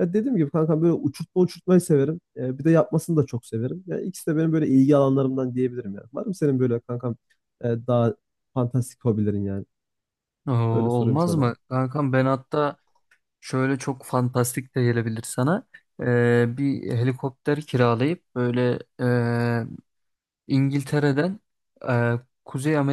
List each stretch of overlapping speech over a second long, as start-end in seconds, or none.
none